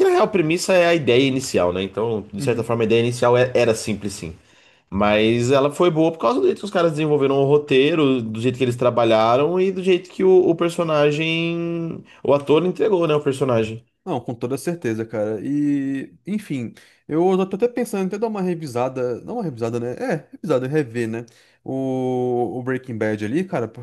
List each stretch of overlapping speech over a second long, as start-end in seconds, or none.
none